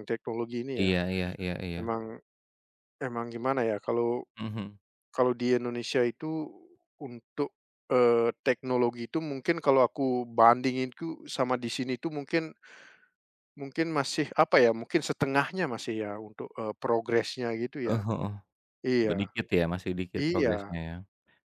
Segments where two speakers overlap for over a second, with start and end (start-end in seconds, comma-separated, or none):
none